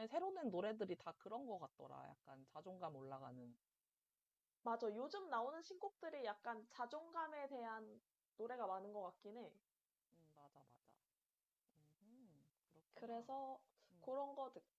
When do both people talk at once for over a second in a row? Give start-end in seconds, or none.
none